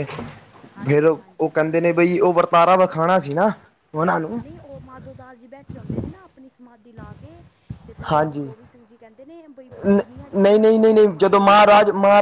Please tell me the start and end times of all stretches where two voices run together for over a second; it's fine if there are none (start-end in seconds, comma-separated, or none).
9.8-11.7